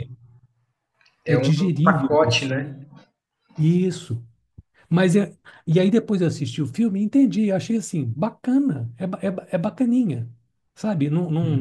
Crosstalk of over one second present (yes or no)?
yes